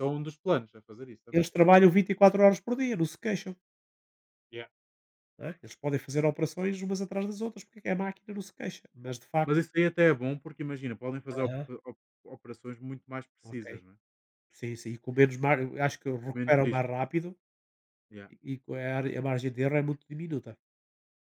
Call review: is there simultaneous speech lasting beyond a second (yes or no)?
no